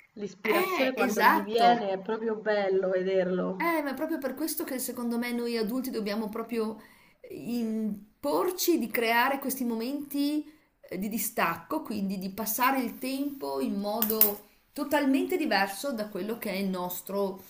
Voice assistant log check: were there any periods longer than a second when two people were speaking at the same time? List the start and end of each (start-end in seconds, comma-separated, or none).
0.6-1.9